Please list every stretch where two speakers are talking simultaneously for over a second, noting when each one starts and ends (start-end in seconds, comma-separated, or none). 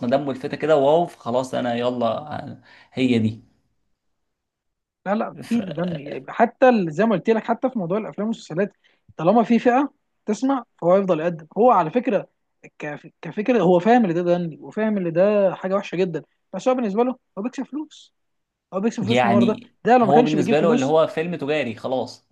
19.0-20.9